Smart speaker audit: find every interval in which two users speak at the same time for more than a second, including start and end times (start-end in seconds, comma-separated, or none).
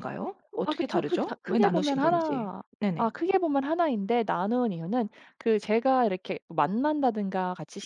0.6-3.1